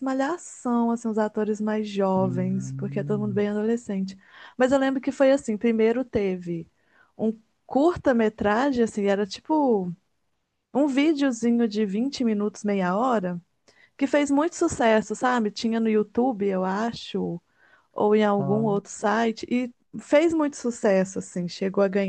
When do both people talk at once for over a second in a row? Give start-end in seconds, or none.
2.2-3.4